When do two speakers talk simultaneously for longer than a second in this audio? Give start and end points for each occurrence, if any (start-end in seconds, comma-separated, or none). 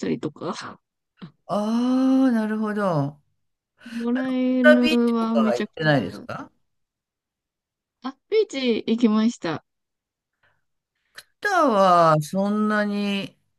4.6-6.2